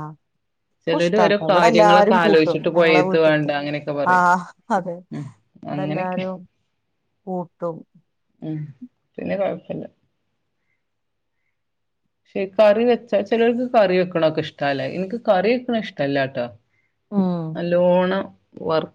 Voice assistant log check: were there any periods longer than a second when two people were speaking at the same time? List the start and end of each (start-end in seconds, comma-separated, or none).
0.9-3.5